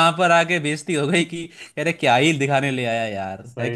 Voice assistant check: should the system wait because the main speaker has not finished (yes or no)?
no